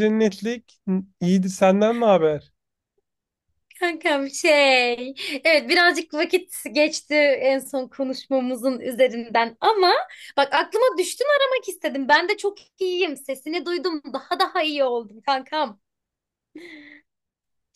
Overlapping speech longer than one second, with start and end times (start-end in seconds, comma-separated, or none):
none